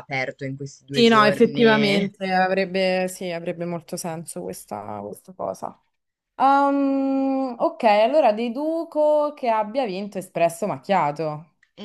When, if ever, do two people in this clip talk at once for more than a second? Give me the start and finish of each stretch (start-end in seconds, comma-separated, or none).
0.9-2.1